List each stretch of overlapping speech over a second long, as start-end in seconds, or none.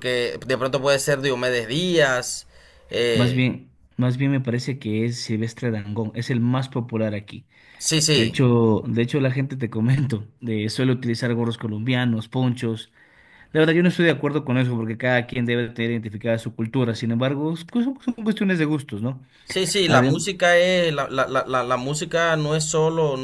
none